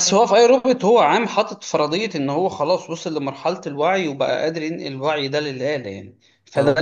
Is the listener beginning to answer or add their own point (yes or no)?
no